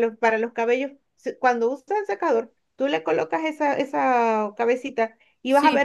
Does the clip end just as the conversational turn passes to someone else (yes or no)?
no